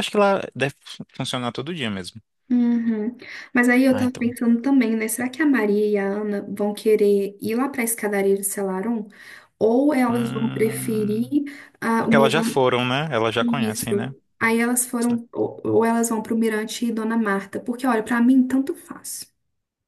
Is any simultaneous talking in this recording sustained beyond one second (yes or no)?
yes